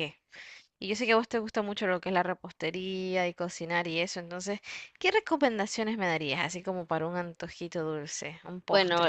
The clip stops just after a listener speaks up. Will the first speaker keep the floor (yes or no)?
no